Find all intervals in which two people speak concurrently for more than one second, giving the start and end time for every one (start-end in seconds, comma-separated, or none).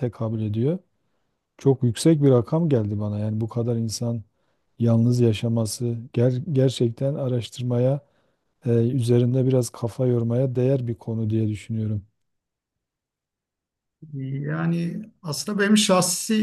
none